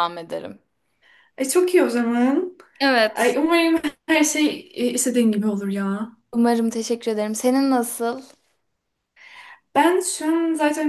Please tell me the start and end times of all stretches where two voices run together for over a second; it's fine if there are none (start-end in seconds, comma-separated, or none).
none